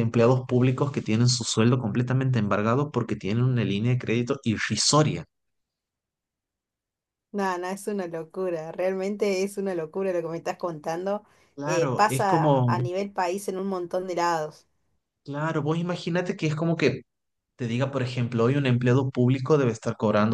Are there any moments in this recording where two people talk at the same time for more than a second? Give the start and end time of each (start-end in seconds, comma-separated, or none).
11.7-12.9